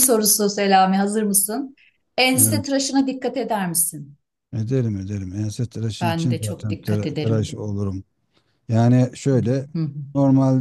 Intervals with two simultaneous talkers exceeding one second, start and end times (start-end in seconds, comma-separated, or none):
6.0-7.6